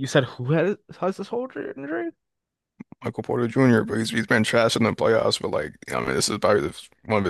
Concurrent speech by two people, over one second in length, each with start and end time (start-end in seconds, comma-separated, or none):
none